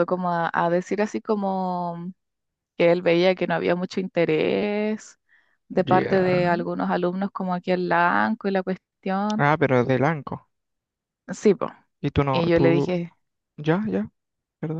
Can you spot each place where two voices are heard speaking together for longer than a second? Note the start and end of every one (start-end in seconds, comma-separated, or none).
none